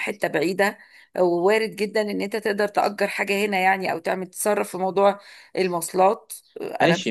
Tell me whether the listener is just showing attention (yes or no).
no